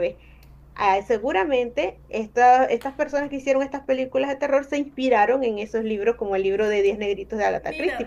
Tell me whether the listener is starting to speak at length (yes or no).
yes